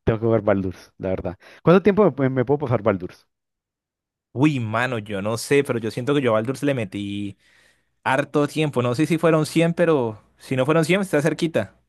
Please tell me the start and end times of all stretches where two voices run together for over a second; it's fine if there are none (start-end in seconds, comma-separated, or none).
none